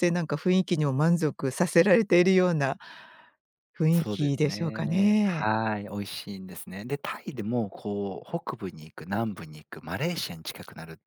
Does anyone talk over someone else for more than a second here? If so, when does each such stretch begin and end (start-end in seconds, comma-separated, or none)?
3.9-5.5